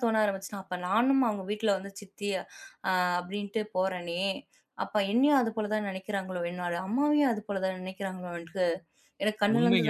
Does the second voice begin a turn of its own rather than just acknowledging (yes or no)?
yes